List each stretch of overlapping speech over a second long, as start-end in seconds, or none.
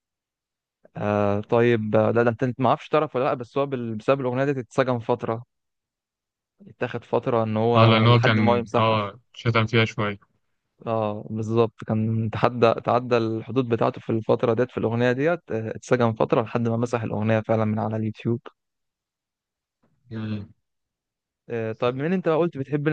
7.8-9.0